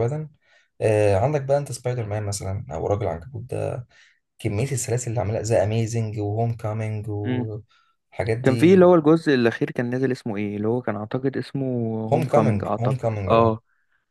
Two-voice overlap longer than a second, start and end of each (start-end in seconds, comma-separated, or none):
12.1-13.6